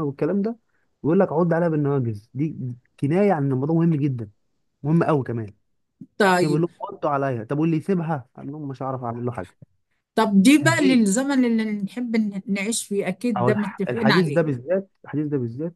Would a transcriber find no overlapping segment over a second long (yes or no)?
no